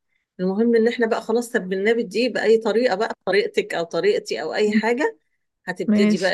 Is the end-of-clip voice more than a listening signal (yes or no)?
no